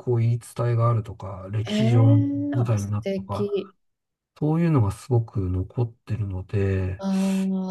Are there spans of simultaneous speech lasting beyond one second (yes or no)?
yes